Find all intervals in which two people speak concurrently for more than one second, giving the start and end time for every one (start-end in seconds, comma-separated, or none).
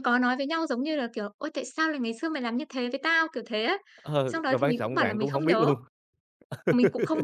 4.3-5.7